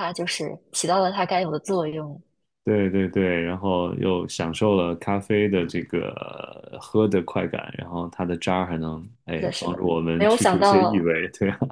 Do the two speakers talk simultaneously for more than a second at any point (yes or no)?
yes